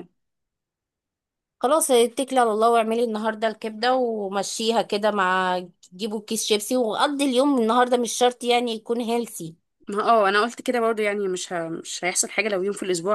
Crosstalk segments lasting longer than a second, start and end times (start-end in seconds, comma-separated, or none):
none